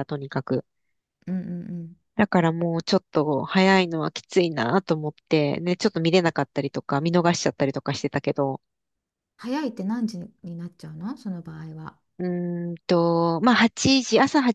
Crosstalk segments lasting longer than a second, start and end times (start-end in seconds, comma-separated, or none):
none